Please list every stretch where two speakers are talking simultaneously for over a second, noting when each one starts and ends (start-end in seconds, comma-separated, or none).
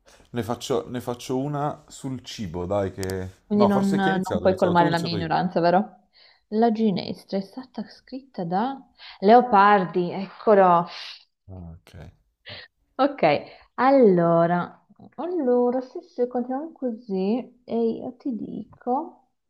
3.5-5.3